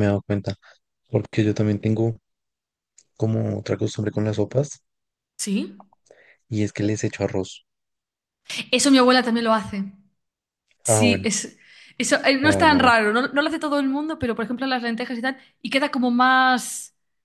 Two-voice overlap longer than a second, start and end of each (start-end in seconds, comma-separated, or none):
none